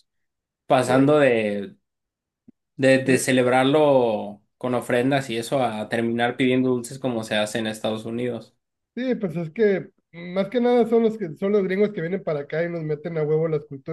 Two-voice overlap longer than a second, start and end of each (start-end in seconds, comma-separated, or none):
none